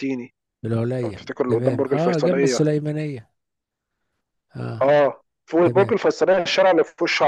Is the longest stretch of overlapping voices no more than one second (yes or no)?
no